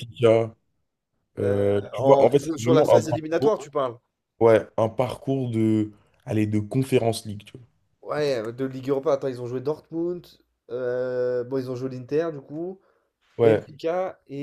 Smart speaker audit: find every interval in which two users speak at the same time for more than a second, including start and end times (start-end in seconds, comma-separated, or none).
1.4-3.6